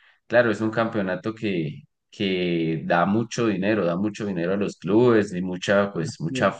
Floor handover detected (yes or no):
no